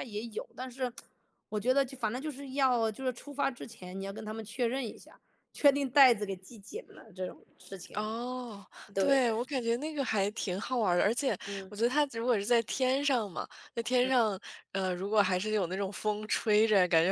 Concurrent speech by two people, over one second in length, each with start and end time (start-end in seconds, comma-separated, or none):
none